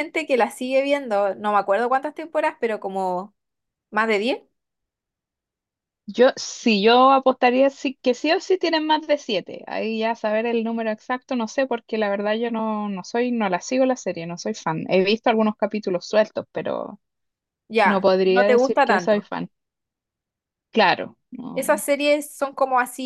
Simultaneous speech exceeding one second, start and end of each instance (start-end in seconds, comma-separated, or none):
17.8-19.3